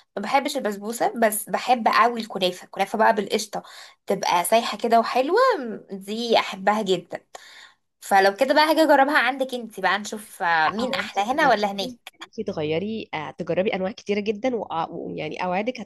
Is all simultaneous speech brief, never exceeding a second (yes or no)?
no